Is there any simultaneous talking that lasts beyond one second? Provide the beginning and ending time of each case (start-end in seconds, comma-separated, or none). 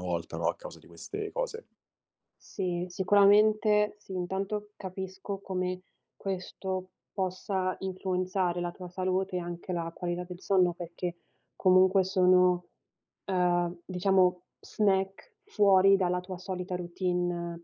none